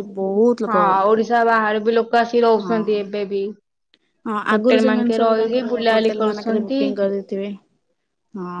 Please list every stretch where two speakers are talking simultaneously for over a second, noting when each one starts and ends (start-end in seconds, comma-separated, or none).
4.5-6.8